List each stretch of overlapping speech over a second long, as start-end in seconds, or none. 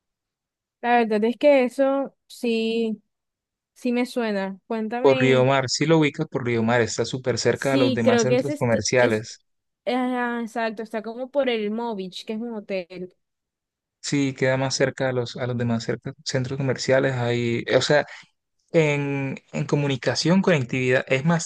7.5-9.2